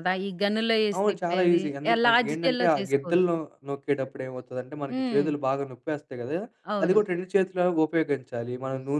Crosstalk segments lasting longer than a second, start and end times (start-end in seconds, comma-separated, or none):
1.0-3.3